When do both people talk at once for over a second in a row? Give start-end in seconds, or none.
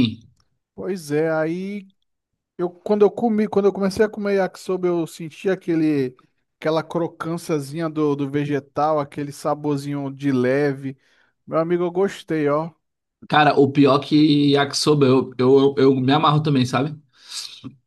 none